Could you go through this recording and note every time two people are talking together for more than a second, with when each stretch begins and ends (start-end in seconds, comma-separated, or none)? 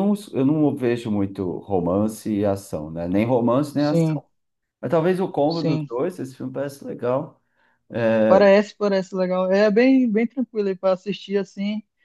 none